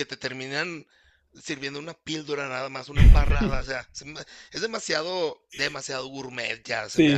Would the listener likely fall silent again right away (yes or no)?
no